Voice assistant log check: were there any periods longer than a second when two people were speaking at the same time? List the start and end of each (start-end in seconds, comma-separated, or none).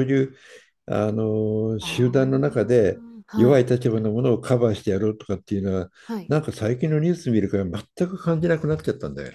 1.8-3.7